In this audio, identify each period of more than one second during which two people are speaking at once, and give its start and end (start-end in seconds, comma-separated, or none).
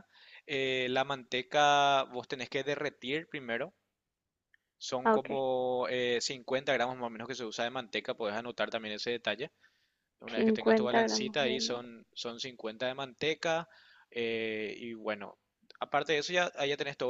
10.2-11.9